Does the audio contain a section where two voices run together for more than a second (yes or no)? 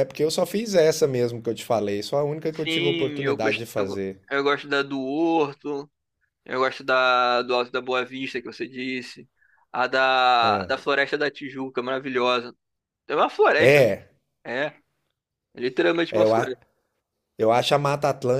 yes